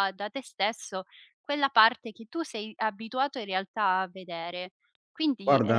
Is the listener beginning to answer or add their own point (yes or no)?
no